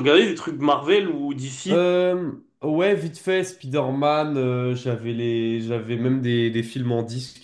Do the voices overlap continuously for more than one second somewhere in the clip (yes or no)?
no